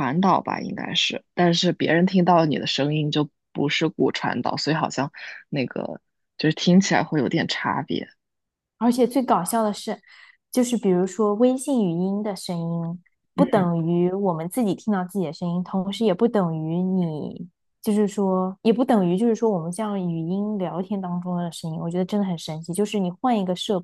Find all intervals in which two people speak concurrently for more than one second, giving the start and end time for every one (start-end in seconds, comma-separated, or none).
none